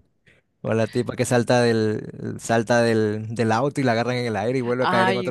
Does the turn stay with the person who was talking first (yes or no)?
no